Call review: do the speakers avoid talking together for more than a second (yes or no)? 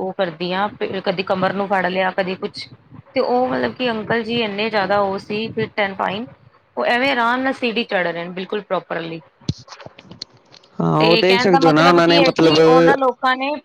no